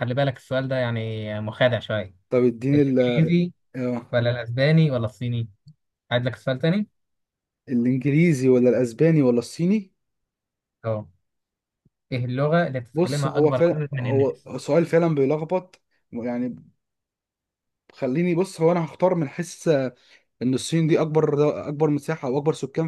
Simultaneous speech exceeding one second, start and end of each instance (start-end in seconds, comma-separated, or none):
12.9-14.5